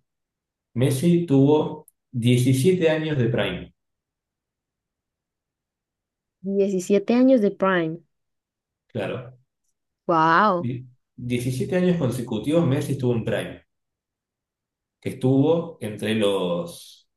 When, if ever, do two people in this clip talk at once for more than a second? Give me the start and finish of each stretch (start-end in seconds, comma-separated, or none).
none